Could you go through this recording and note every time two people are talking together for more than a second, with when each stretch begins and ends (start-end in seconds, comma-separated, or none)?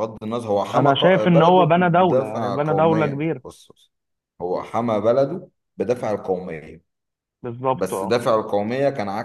0.7-3.4